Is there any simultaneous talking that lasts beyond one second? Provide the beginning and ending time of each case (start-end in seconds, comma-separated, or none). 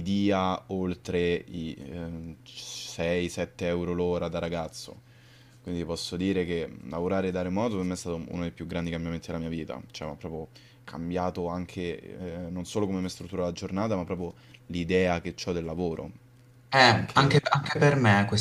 none